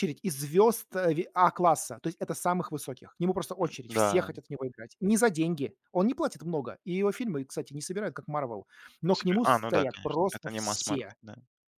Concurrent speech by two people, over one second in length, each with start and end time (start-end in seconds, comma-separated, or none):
9.2-11.2